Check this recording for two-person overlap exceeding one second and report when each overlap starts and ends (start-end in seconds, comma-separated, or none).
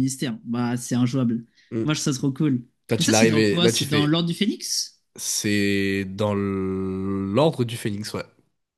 2.9-4.1